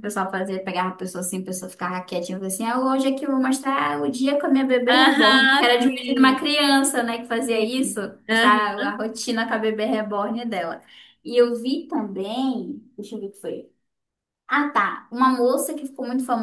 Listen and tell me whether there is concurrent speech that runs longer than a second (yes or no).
yes